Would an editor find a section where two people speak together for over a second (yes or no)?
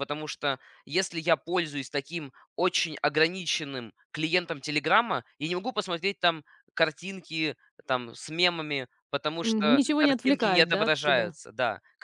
yes